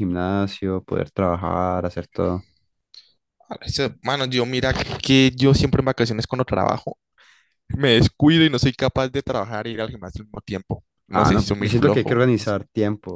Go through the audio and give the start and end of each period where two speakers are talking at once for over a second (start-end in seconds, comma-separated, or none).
11.1-12.5